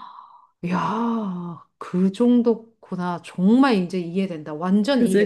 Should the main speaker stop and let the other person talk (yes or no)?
yes